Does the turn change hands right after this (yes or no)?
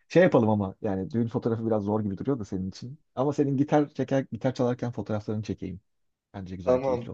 yes